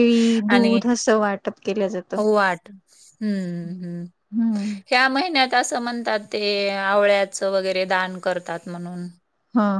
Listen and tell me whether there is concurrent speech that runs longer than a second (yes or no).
no